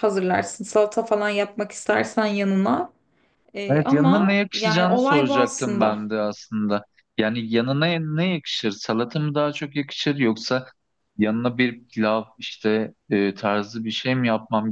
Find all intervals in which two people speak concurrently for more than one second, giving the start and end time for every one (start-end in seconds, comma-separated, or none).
3.7-6.1